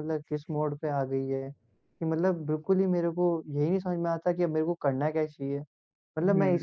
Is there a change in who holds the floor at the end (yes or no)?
no